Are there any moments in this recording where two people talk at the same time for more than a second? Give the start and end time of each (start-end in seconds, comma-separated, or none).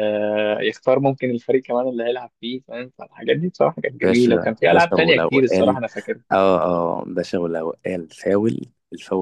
4.0-5.8